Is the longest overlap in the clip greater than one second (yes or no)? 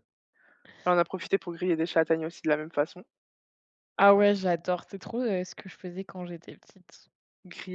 no